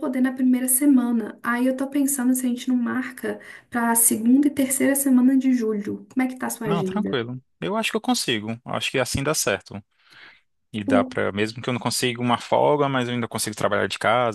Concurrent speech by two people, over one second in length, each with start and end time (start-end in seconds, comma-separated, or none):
none